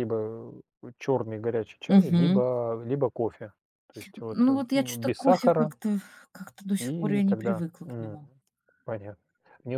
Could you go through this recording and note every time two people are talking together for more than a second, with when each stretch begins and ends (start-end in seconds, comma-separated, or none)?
4.3-5.7, 6.8-8.2